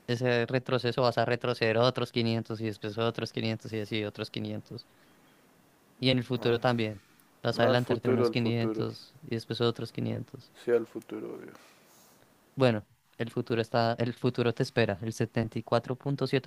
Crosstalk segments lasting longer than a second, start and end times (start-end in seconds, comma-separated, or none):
7.6-8.9